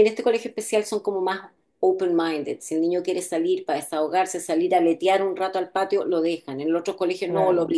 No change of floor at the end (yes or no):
yes